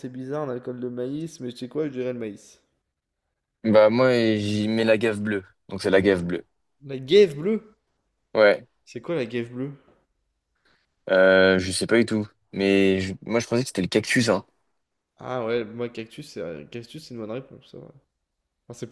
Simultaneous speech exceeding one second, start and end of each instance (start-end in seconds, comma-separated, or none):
none